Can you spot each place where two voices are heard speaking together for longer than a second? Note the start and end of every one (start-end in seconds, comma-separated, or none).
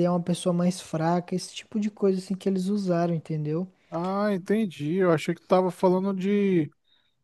none